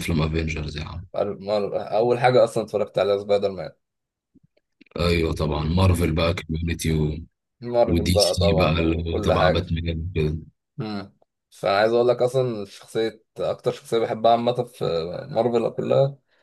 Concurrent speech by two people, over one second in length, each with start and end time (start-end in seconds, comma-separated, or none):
7.8-9.6